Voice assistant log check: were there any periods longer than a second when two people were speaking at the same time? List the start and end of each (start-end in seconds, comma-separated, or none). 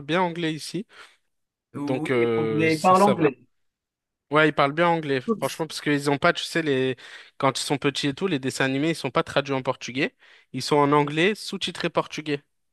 1.9-3.4